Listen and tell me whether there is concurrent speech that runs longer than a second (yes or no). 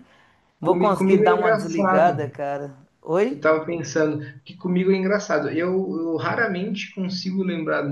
yes